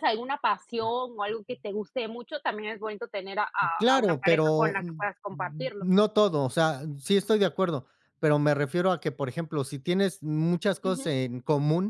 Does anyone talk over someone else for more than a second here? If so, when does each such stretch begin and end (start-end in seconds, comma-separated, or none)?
3.8-5.9